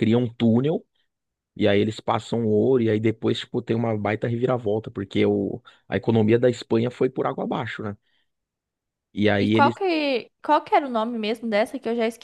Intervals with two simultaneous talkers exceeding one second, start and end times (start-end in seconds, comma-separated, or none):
none